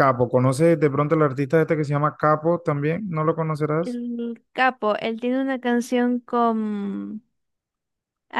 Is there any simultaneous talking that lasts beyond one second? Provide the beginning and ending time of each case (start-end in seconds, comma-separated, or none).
none